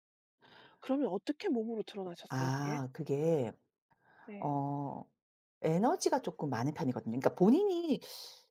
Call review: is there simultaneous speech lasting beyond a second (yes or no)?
no